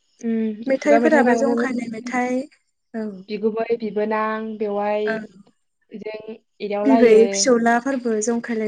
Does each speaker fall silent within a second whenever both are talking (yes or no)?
no